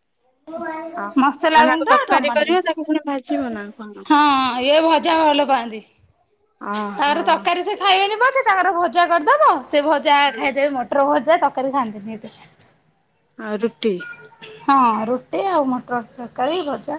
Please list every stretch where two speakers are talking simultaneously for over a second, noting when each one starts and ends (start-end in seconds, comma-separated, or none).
1.6-3.7